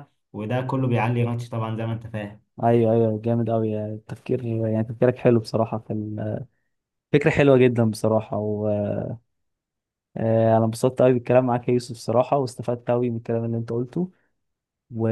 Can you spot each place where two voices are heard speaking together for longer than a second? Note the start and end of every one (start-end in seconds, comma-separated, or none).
none